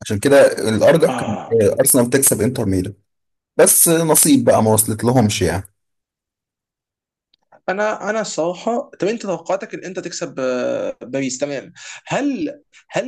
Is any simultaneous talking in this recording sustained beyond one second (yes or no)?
no